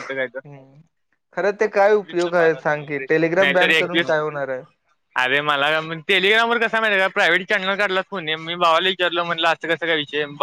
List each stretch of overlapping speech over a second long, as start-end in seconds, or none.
2.2-4.1